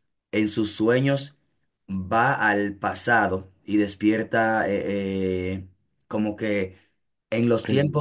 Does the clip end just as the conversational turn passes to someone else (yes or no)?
no